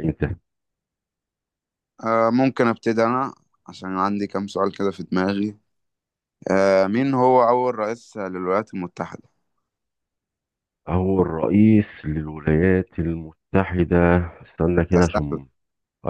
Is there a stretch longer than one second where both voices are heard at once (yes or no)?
no